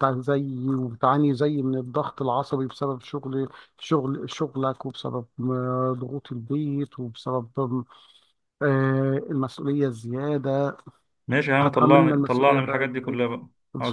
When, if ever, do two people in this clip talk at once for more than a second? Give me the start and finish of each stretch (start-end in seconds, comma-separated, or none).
11.6-13.2